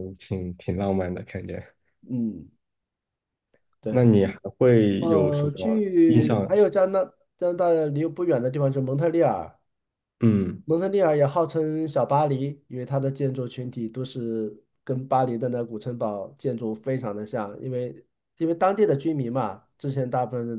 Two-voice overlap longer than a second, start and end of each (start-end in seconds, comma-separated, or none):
5.0-6.6